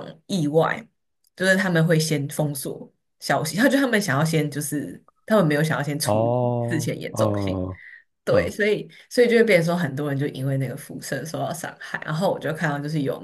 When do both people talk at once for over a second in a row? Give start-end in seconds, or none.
6.0-7.6